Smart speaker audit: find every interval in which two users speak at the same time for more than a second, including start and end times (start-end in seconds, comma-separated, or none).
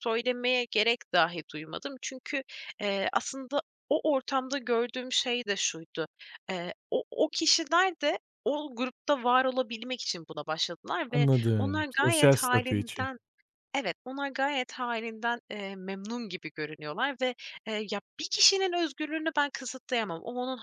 11.1-13.1